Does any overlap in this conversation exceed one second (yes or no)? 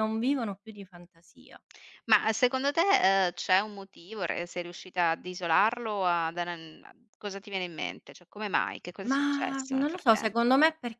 yes